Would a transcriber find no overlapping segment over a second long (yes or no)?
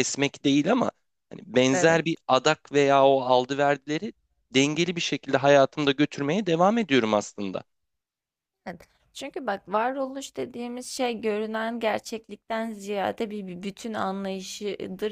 yes